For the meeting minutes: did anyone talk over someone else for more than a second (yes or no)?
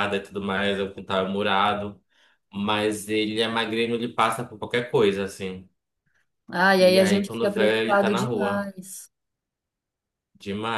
yes